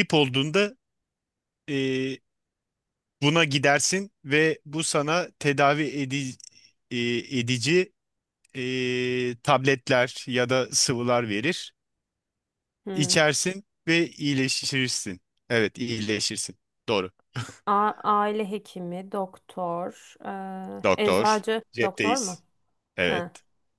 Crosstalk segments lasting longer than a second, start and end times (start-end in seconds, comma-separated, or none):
21.0-22.4